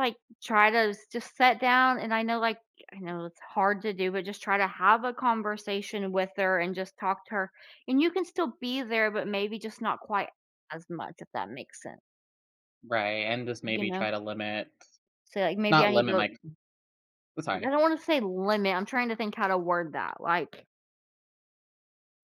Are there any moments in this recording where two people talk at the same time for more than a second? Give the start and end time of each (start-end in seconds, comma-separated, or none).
none